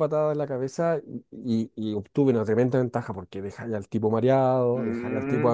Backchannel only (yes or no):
no